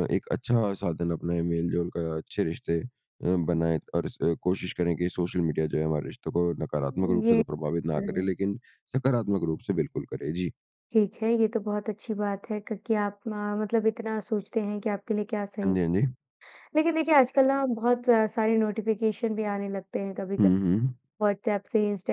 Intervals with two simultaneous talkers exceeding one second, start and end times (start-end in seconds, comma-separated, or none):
6.8-8.3